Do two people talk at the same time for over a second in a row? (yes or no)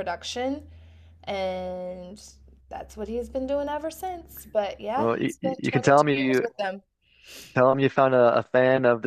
yes